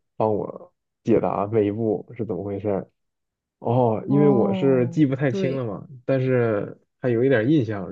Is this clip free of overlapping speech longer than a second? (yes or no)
no